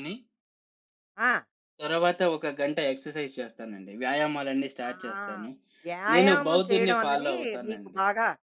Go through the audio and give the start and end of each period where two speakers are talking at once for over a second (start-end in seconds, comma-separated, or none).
6.1-8.0